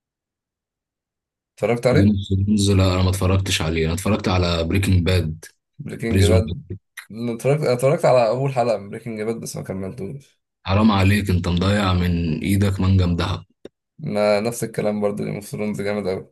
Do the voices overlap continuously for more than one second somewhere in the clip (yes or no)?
no